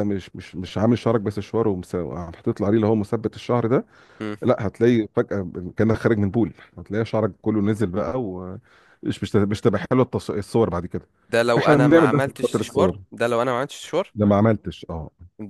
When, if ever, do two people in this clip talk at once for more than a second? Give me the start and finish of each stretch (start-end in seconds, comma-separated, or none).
11.6-13.0